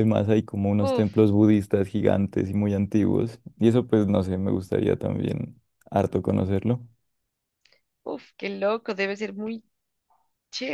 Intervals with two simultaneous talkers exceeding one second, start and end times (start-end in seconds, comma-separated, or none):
none